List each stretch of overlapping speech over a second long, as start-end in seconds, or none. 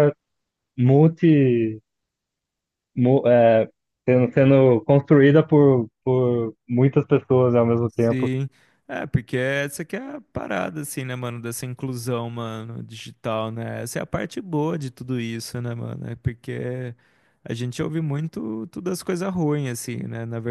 none